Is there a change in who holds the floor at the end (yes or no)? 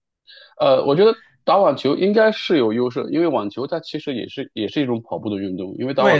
yes